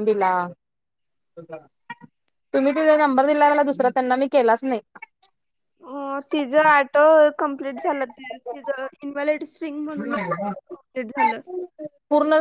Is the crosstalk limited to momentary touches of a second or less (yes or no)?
yes